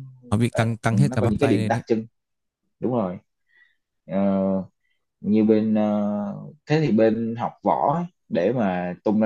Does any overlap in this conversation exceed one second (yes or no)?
yes